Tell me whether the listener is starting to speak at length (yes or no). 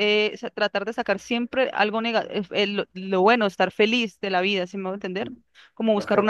no